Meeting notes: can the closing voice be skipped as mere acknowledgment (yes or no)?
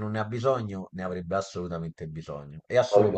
no